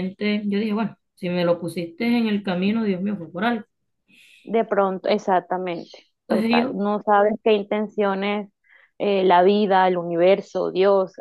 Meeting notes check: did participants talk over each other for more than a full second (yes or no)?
no